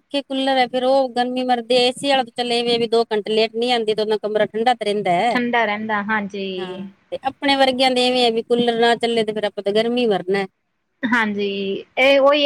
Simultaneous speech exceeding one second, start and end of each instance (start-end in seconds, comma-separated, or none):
none